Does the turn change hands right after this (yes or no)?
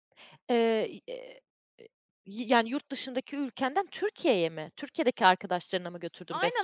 yes